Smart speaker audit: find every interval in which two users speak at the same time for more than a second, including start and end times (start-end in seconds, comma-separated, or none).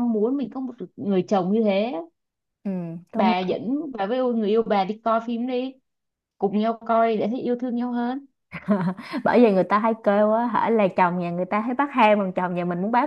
none